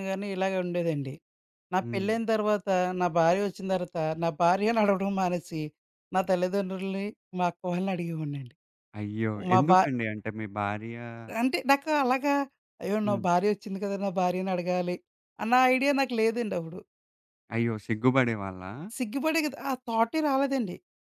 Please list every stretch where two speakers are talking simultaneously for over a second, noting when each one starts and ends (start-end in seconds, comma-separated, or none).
none